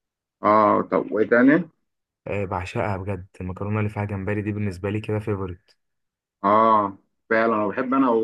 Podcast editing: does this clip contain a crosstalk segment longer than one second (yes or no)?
no